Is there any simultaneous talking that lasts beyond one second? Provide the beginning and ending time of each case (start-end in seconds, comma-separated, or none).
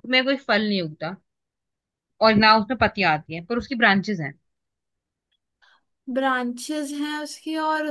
none